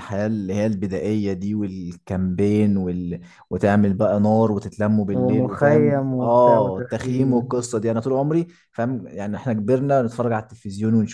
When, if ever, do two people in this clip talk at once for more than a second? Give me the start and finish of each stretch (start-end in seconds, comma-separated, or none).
5.1-7.5